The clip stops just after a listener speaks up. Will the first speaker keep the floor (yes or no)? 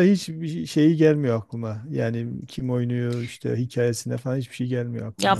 no